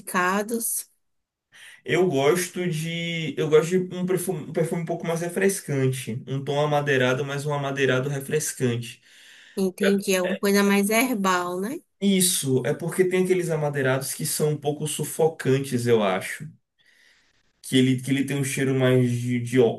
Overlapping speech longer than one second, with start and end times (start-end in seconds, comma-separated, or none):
none